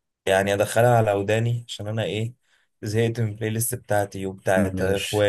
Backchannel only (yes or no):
yes